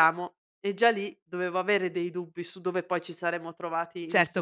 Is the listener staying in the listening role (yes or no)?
no